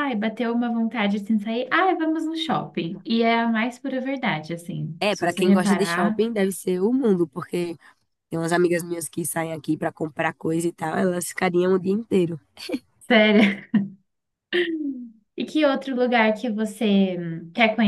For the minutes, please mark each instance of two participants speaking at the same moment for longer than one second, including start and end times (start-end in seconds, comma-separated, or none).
5.0-6.2